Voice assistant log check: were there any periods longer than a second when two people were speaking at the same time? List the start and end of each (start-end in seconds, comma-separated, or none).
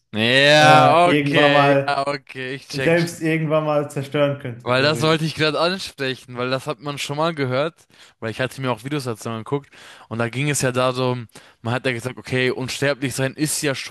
0.6-2.0